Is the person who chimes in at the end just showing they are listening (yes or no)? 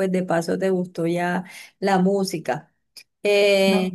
yes